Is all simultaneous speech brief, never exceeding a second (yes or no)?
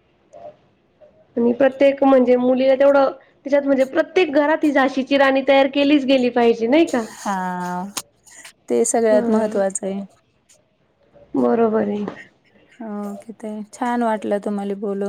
yes